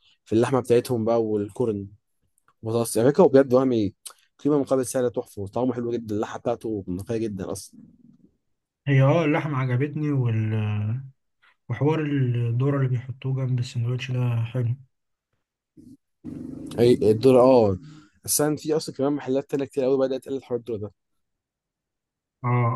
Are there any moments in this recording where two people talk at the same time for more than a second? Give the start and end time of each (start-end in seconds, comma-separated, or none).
none